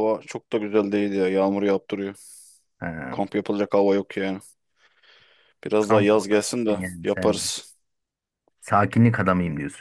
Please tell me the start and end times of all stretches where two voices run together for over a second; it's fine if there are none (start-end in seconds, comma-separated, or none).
5.8-7.5